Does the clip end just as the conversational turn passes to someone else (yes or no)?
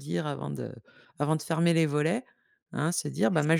no